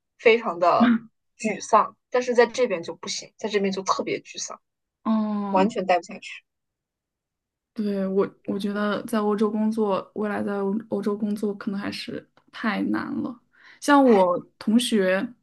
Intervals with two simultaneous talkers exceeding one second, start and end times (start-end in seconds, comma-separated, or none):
none